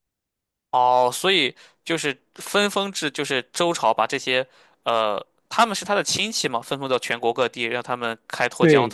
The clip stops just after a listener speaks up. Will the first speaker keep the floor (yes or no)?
no